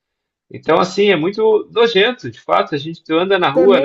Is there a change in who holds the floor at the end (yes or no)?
no